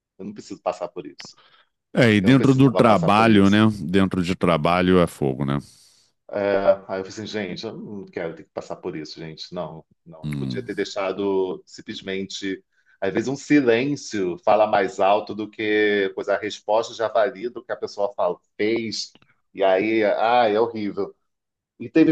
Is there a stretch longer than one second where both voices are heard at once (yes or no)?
yes